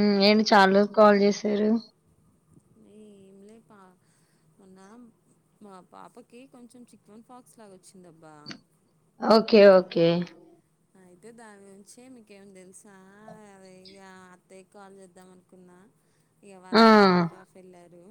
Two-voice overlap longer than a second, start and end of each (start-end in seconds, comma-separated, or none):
none